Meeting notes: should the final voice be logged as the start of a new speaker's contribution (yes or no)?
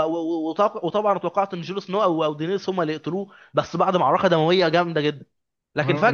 yes